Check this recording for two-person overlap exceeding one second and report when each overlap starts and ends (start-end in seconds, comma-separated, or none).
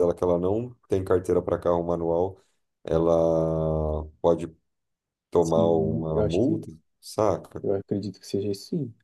5.4-6.7